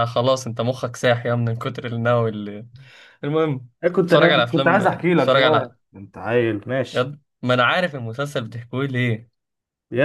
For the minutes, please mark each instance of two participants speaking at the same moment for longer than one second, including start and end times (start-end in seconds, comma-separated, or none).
4.1-5.8